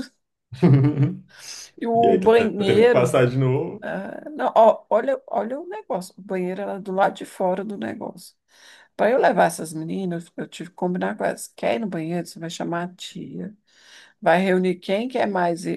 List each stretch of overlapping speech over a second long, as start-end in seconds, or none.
1.9-3.2